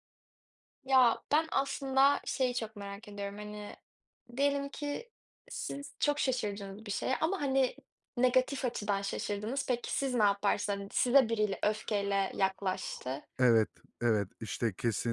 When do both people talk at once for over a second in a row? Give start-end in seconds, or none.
none